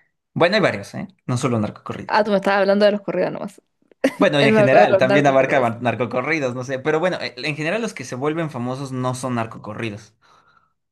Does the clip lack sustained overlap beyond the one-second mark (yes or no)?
no